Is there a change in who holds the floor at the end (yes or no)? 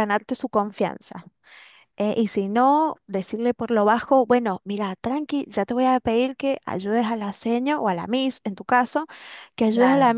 no